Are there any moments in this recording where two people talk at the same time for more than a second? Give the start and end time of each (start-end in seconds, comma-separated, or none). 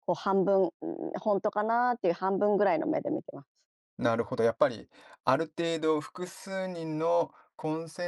none